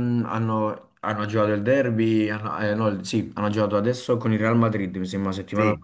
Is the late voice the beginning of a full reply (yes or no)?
no